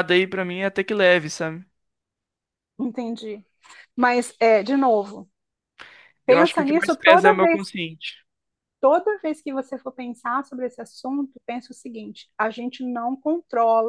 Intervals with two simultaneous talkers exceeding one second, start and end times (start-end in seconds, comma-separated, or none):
6.3-7.6